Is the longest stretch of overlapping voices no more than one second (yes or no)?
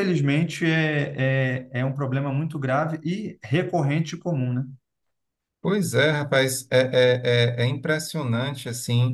yes